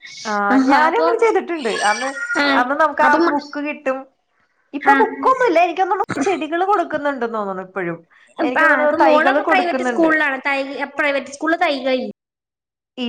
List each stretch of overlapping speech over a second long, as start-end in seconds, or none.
8.6-10.0